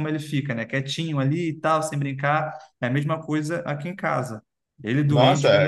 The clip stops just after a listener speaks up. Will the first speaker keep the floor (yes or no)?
no